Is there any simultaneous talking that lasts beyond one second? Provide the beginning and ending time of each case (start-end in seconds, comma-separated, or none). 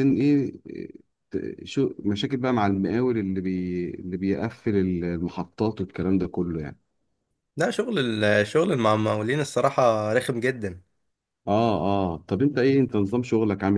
none